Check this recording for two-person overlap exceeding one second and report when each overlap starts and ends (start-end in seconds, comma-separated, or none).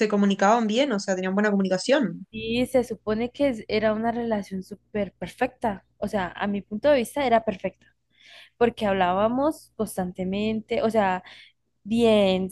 none